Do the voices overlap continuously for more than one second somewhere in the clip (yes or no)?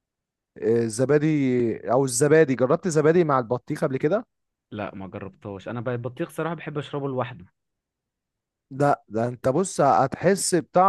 no